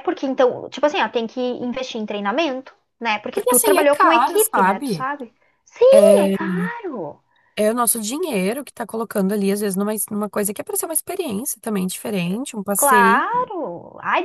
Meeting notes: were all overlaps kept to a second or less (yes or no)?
no